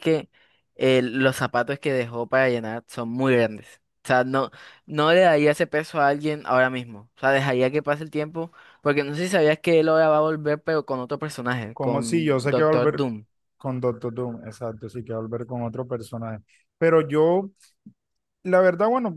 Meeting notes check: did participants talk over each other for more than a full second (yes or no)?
yes